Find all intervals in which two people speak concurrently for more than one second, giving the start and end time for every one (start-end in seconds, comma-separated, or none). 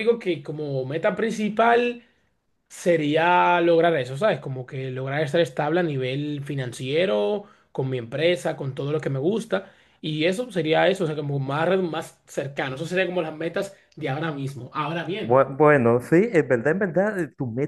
none